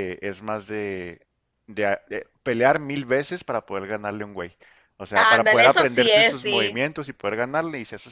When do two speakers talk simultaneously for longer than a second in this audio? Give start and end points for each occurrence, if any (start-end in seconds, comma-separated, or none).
5.2-6.8